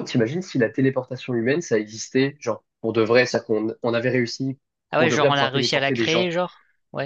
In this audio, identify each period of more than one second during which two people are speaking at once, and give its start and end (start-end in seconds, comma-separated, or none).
5.0-6.3